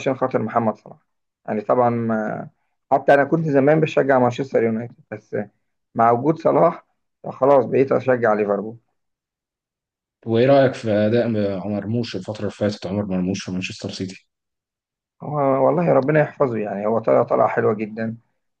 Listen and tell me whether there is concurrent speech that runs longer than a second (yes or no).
no